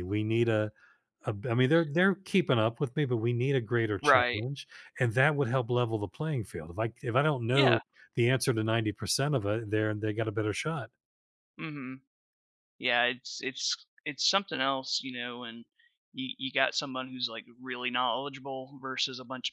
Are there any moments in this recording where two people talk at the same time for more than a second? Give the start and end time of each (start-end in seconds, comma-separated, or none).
none